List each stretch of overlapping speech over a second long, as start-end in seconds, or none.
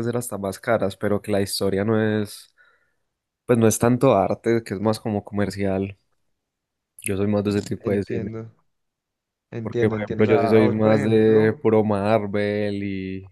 9.6-11.6